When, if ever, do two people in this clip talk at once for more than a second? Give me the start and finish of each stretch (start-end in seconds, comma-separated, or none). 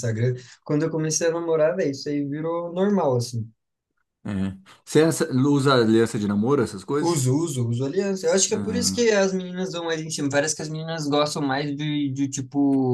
none